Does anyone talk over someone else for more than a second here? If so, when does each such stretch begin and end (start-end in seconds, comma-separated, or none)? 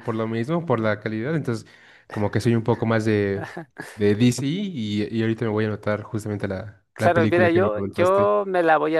6.9-8.3